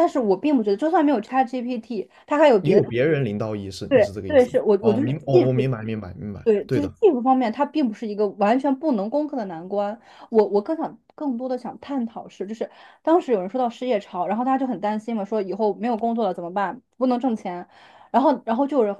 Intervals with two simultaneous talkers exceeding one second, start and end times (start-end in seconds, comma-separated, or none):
3.9-5.6